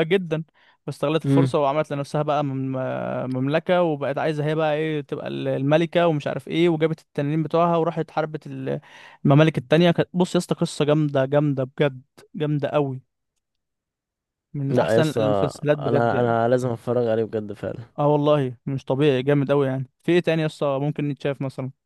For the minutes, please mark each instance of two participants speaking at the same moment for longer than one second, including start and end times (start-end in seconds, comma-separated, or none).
14.7-16.4